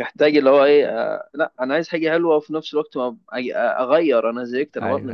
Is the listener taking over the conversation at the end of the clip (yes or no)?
yes